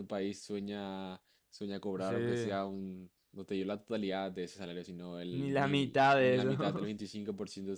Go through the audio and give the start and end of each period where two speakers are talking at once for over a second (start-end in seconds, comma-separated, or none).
5.3-6.9